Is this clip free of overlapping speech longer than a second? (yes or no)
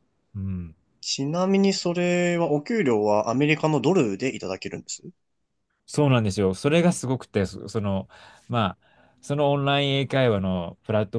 yes